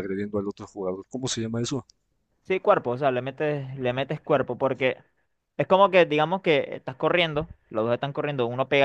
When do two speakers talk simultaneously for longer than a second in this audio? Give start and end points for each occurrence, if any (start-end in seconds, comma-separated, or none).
none